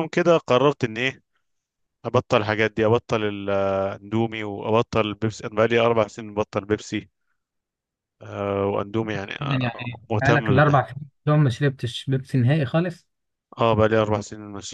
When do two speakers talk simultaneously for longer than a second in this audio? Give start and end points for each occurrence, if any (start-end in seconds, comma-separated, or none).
9.4-10.9